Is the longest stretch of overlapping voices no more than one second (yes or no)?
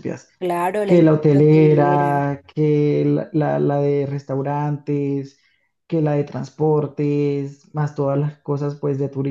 no